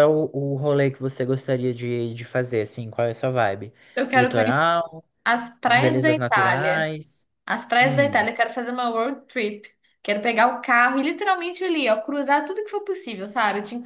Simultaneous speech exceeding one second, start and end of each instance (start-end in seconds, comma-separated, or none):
5.7-6.9